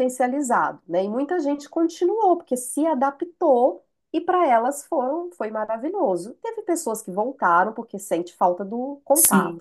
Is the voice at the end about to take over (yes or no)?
yes